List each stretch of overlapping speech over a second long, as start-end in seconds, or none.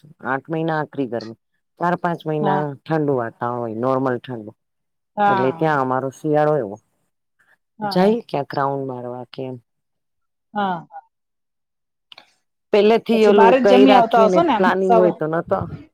13.1-15.0